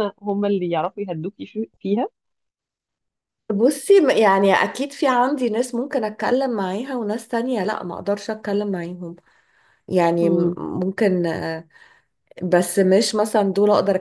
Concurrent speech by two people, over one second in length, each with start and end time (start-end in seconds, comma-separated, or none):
none